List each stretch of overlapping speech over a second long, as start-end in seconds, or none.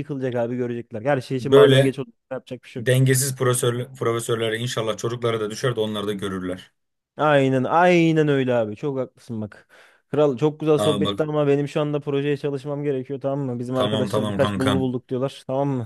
13.7-14.9